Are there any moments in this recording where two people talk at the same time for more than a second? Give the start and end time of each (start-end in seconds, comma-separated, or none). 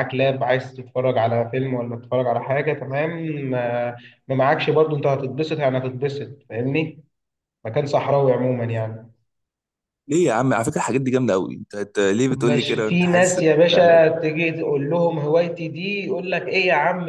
12.3-14.1